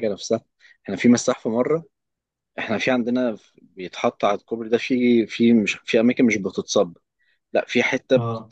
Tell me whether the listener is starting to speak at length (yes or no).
no